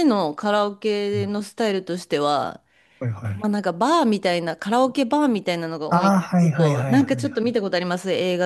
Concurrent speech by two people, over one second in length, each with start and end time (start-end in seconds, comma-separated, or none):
5.9-7.6